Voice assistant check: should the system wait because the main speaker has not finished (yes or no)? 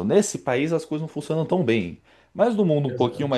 yes